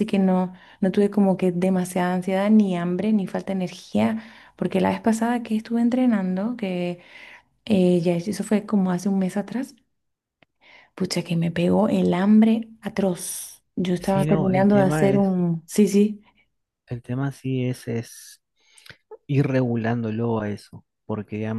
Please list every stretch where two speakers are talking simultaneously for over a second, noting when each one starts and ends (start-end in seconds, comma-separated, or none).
14.0-15.4